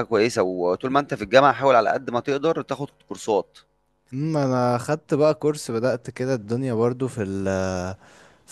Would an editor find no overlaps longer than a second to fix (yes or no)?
yes